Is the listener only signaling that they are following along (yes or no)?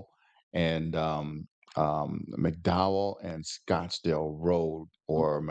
yes